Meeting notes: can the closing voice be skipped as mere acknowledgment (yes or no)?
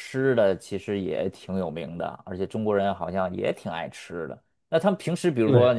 yes